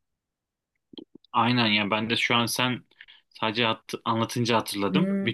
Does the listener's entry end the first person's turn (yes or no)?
yes